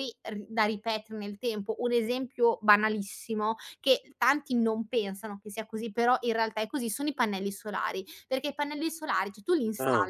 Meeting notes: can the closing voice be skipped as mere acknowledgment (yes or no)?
yes